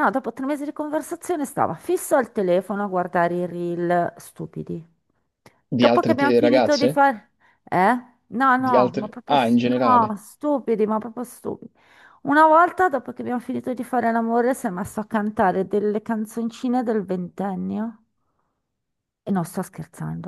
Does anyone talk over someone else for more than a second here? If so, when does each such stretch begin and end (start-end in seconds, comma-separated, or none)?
5.7-7.0, 8.6-10.2